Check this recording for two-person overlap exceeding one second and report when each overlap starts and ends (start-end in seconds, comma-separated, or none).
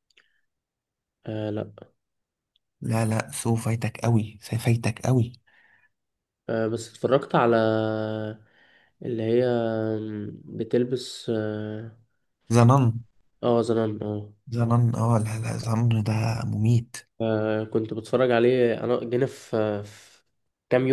none